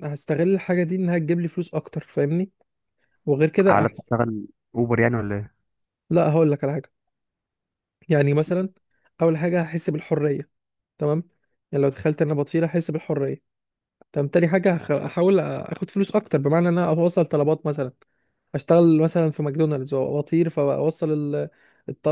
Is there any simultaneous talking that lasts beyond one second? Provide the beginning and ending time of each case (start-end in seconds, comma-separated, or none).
none